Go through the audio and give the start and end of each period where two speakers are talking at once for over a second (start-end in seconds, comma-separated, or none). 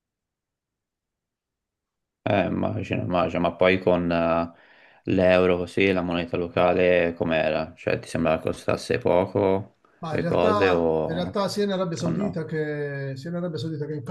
10.0-11.4